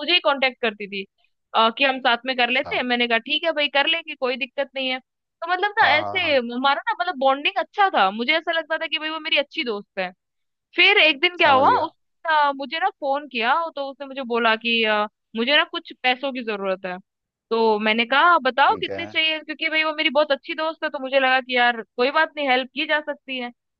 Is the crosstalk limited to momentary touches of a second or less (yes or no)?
yes